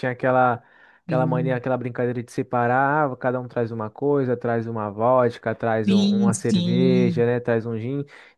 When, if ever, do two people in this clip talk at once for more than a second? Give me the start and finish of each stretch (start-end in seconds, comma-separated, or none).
5.8-7.2